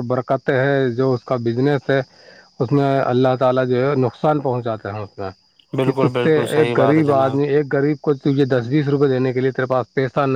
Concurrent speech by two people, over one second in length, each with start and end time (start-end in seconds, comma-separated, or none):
5.8-7.3